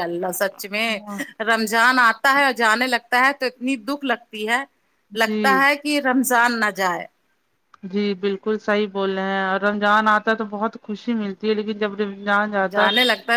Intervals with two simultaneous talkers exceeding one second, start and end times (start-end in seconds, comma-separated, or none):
none